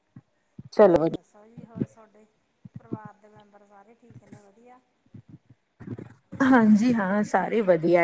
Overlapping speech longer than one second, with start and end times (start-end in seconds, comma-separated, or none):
none